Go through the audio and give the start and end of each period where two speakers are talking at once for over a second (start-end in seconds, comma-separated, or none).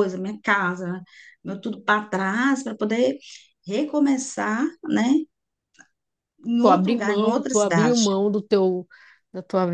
6.6-8.0